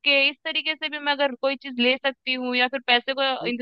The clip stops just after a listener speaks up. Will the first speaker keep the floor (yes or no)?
yes